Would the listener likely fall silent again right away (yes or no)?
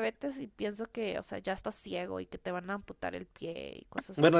no